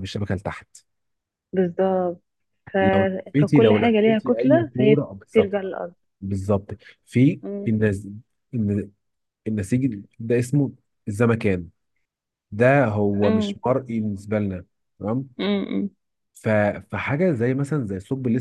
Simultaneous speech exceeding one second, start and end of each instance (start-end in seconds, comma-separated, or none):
3.4-5.5